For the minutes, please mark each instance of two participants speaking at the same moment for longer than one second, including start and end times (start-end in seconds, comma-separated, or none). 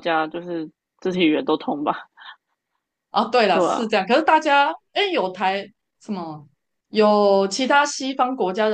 none